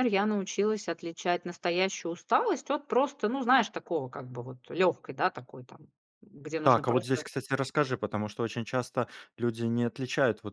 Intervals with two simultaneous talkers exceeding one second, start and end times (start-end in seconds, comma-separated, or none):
none